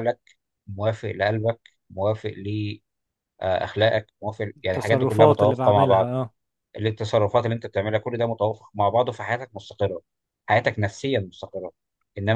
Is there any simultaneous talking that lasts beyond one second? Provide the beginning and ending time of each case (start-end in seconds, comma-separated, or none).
4.6-6.1